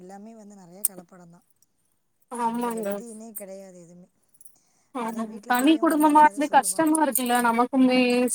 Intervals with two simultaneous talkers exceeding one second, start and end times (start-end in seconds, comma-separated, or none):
5.1-6.9